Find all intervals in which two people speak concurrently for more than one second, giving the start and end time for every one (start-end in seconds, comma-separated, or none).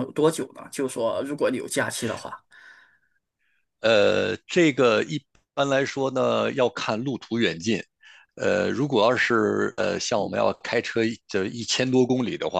none